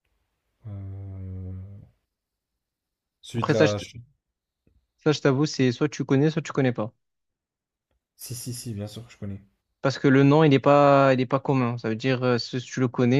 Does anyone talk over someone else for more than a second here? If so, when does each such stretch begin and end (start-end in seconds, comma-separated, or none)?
none